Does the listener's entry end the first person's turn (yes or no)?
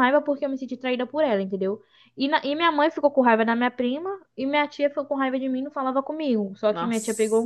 no